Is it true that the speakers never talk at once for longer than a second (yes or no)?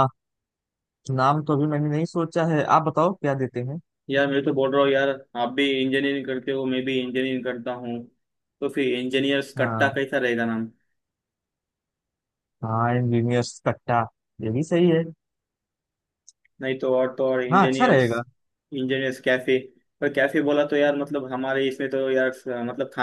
yes